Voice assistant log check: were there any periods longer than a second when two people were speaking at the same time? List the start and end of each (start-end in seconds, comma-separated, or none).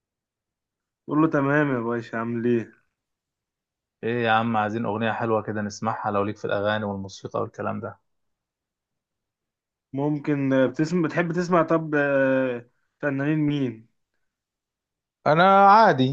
none